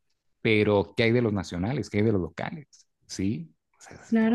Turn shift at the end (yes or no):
yes